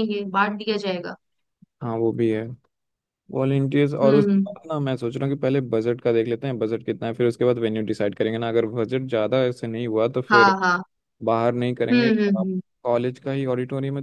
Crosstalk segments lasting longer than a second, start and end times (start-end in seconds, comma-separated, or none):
none